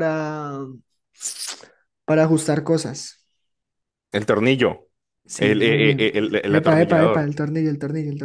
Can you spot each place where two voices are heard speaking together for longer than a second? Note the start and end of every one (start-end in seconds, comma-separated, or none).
5.4-7.3